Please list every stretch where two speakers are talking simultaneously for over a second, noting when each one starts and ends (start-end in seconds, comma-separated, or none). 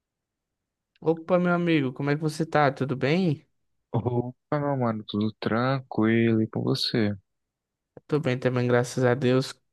none